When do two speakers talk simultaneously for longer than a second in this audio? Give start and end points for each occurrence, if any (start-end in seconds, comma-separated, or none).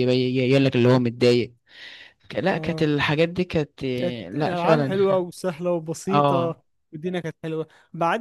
4.0-5.2